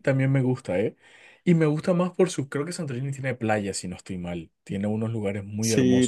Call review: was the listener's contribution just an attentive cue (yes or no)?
no